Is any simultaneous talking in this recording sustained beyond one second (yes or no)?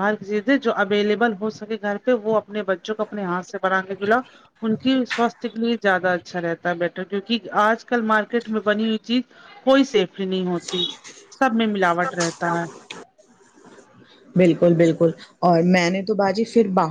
no